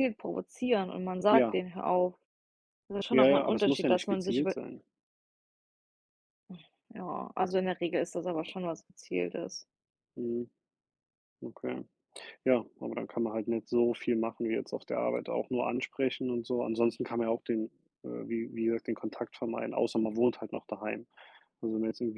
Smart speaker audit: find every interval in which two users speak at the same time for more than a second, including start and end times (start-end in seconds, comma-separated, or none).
3.1-4.5